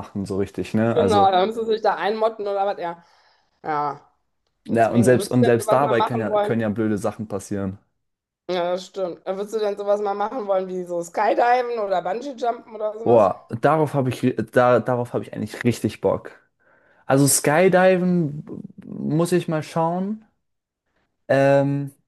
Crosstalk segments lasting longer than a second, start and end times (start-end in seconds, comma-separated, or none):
4.7-6.7